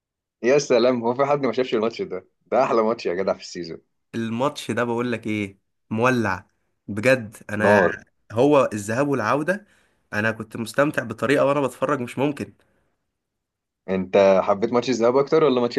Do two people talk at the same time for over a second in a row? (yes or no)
no